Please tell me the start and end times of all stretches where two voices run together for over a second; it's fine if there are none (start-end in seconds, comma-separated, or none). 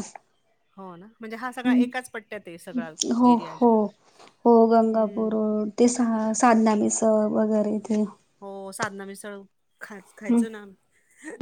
none